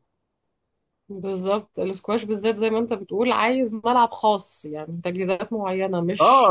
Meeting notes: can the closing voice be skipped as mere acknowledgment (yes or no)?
no